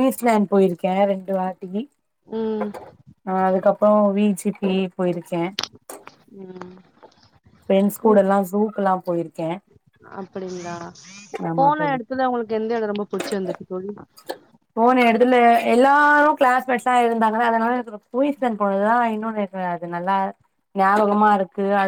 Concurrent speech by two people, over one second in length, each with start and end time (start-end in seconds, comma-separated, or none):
none